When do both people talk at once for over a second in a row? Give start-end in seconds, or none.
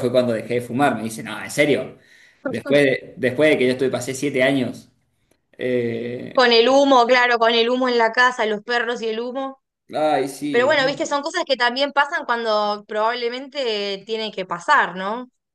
none